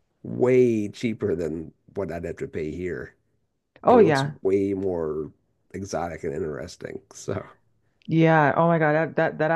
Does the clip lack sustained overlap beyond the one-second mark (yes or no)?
yes